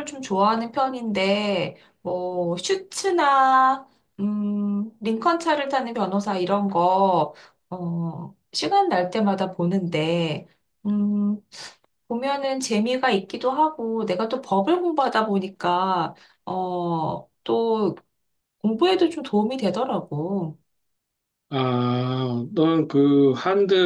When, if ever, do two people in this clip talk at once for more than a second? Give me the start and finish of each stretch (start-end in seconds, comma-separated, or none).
none